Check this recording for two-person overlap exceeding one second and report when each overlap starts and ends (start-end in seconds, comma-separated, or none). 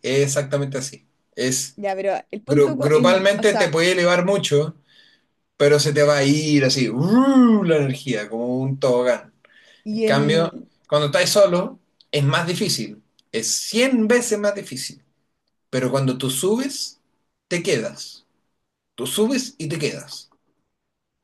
2.5-3.8